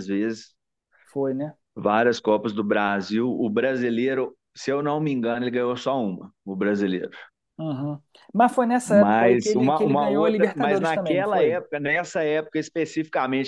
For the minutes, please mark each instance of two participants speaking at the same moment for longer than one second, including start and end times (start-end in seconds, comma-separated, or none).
8.8-11.6